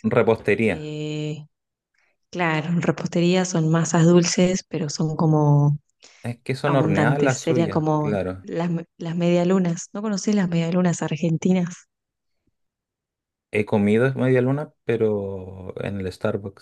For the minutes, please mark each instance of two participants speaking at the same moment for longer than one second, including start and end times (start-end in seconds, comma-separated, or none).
6.6-8.4